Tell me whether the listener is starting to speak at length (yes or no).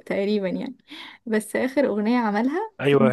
yes